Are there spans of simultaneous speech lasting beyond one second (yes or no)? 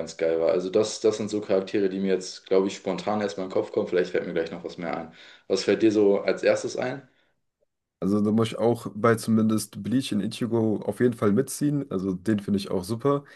no